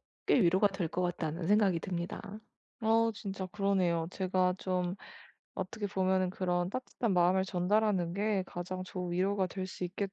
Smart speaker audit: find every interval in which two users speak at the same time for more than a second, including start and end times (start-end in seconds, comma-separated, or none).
none